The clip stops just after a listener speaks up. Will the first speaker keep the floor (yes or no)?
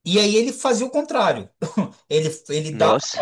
yes